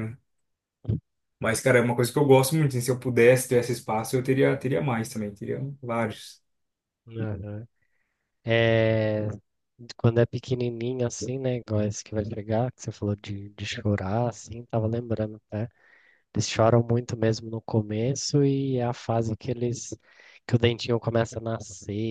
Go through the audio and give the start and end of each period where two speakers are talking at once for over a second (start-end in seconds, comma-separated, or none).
none